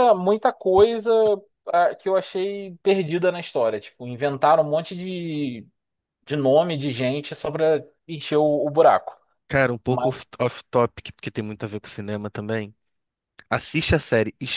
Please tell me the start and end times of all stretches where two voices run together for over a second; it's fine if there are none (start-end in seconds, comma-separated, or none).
none